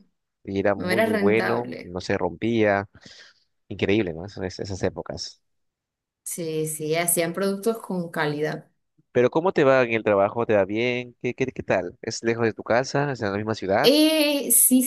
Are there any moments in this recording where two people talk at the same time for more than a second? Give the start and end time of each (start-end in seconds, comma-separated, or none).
0.8-1.9